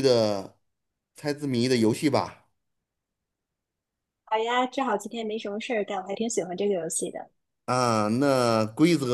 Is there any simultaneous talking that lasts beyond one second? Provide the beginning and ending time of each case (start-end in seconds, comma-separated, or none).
none